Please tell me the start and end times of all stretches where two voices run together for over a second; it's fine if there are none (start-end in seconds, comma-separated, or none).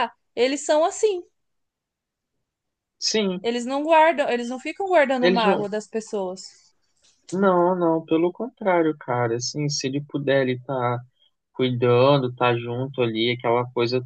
none